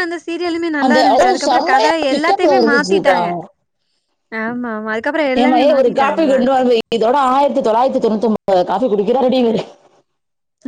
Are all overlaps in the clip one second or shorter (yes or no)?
no